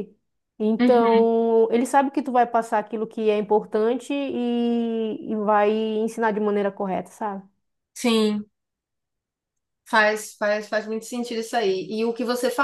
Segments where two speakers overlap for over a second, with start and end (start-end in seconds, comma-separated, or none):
none